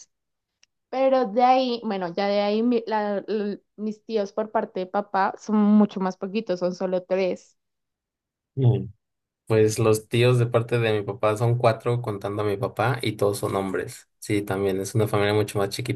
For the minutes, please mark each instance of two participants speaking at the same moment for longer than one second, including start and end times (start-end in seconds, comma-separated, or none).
none